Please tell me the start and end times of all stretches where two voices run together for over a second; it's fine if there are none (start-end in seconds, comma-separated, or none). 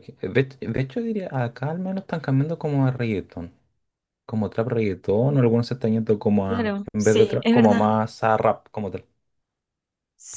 6.5-7.9